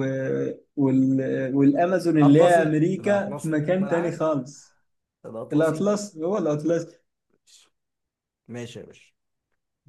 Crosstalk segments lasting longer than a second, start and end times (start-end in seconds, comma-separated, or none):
2.2-4.2